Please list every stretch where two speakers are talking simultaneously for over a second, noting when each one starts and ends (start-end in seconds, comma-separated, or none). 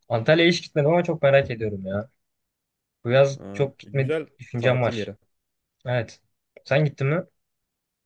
3.4-5.1